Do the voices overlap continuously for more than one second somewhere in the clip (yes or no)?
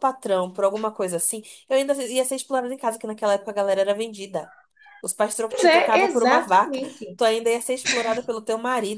yes